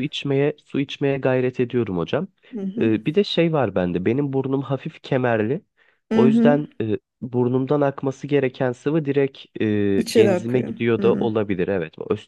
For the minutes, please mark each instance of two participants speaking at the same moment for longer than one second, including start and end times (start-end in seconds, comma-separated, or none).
10.0-11.3